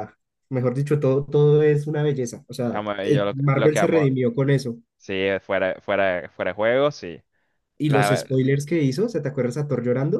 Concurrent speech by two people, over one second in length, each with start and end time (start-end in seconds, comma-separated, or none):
2.7-4.1